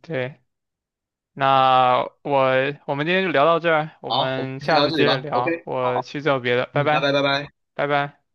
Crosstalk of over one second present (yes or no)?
yes